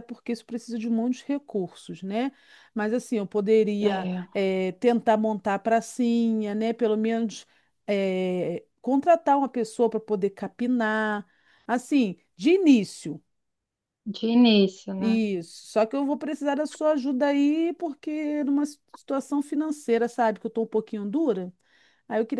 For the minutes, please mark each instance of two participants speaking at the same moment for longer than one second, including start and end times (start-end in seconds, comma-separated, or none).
none